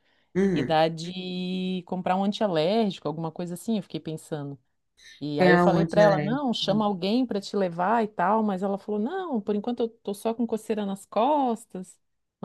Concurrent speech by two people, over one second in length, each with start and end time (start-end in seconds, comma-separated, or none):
5.5-6.9